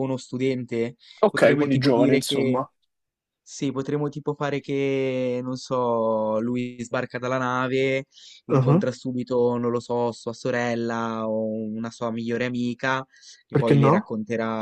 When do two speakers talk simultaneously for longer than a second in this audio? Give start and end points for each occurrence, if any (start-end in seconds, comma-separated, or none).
1.2-2.6